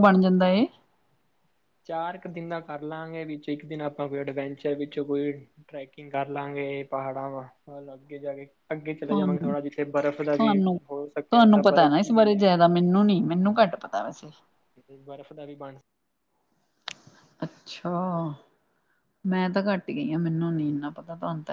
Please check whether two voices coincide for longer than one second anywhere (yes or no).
no